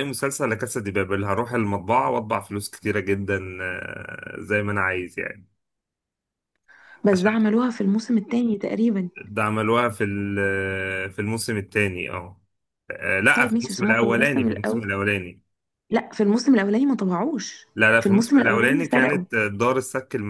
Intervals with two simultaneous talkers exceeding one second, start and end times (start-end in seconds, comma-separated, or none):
13.3-14.9, 17.8-19.2